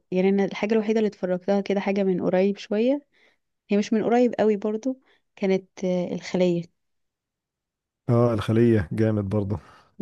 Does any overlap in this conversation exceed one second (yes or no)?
no